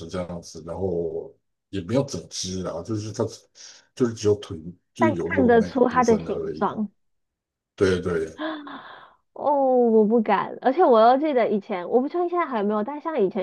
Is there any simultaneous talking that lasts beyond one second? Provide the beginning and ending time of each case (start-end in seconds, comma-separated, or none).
5.0-6.8